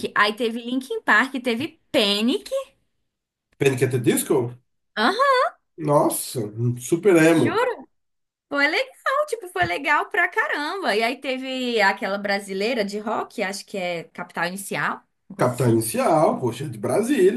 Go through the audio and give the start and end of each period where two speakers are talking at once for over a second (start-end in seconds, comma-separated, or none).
none